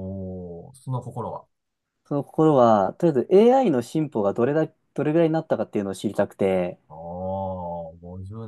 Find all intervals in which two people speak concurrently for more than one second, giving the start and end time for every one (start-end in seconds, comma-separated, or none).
none